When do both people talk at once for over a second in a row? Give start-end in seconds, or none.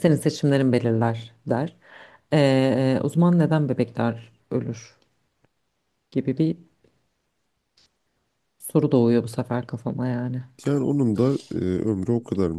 none